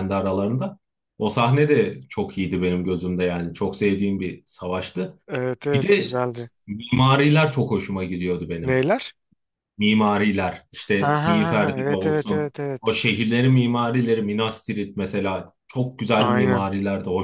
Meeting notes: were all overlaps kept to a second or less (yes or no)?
no